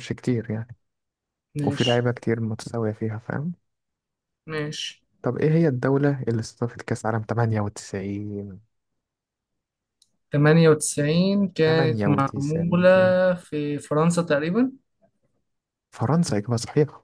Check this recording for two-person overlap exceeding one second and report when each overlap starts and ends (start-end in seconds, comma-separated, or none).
11.7-12.9